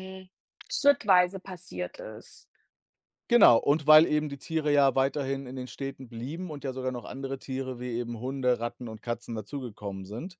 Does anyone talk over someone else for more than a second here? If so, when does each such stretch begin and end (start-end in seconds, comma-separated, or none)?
none